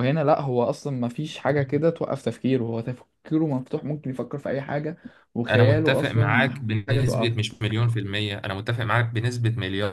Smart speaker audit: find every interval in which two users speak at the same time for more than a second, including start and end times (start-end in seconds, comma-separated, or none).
5.5-7.4